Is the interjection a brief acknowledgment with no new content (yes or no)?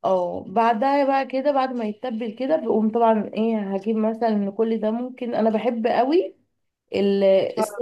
yes